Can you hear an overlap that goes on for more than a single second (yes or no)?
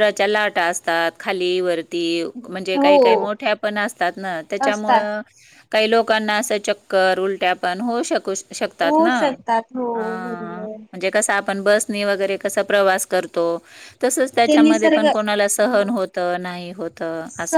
yes